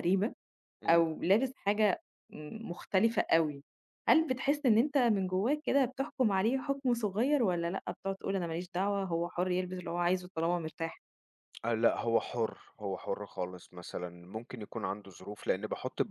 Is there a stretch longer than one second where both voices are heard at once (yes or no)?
no